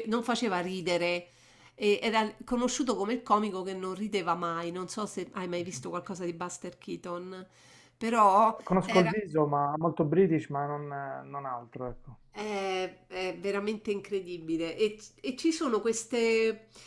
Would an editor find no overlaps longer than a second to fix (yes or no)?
yes